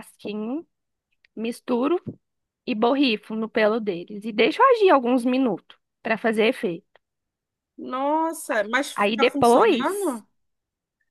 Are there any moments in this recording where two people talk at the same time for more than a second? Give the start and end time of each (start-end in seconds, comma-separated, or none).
8.9-10.2